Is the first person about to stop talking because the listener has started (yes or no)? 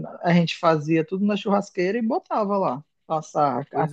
yes